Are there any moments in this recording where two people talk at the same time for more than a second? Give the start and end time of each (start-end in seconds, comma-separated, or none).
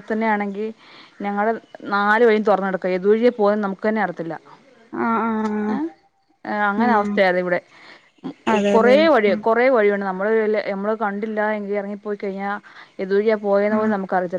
none